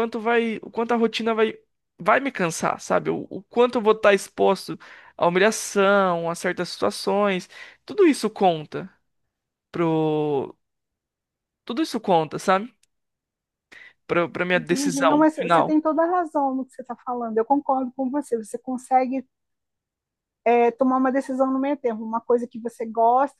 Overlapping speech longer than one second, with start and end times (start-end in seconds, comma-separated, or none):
14.6-15.8